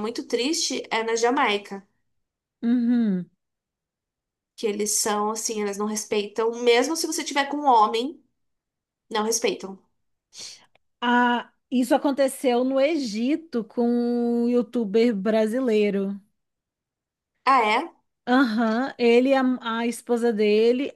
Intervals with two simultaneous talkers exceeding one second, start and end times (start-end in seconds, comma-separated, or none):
none